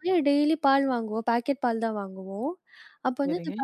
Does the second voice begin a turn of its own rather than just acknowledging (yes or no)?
no